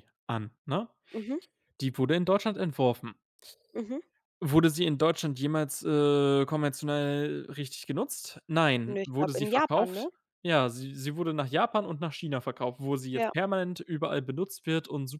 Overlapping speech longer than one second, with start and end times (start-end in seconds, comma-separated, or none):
8.9-10.1